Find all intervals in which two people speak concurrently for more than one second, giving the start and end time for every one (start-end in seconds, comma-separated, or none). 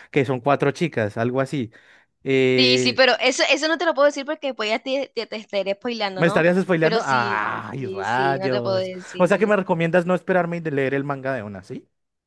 6.1-9.6